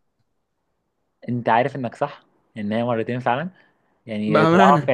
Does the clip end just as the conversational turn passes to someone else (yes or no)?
no